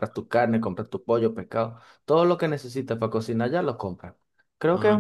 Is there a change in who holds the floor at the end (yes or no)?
no